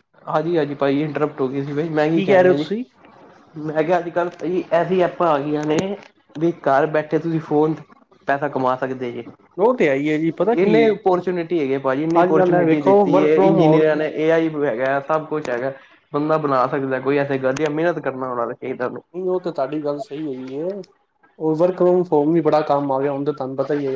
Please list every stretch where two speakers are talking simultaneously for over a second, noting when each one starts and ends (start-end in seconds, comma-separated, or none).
12.2-13.8